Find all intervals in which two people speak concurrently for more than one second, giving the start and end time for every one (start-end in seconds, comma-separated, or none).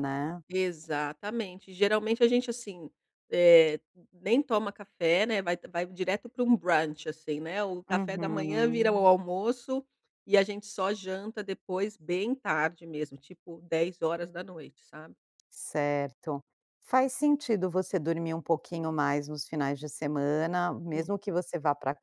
7.9-9.1